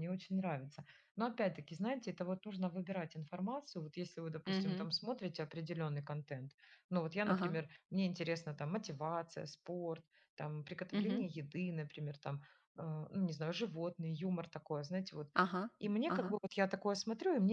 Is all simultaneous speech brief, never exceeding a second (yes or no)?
yes